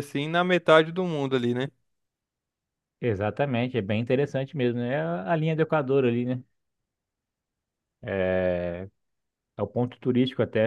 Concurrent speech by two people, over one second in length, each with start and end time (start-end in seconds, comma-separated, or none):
none